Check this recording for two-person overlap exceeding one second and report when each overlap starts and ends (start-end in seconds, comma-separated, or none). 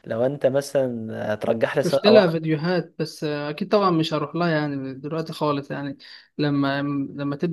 none